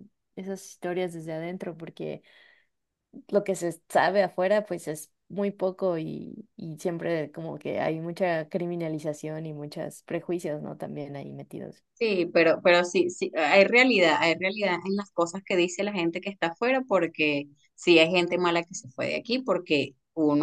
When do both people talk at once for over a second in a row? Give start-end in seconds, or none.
none